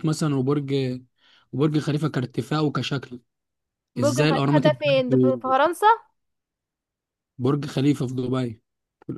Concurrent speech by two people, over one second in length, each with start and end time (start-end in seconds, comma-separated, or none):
4.0-5.5